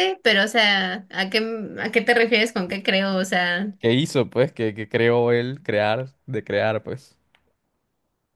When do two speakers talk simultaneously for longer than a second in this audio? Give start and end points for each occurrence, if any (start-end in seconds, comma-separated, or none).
none